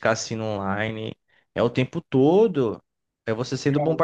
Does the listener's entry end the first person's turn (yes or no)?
no